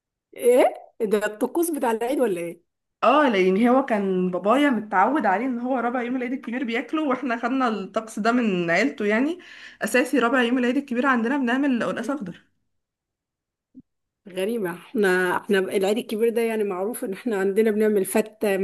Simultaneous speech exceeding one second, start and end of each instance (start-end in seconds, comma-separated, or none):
none